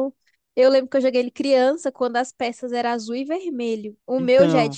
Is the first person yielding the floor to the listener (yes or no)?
no